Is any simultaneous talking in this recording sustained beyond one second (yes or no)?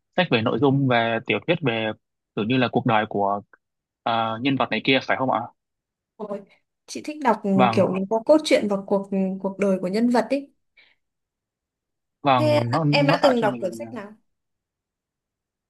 yes